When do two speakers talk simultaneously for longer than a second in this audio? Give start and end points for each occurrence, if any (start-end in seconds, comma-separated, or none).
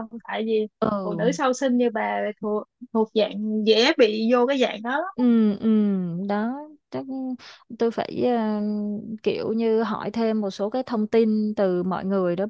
none